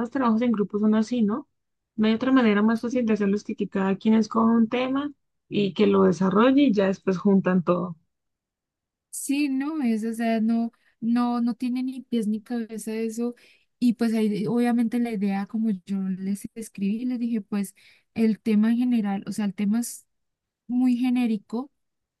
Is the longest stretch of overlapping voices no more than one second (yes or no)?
yes